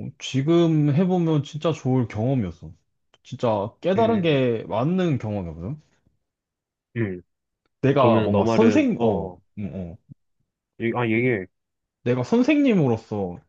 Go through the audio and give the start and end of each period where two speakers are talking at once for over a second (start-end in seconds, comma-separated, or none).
8.0-9.4